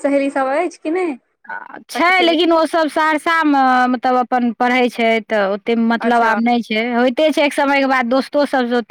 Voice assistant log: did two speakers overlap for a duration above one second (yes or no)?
no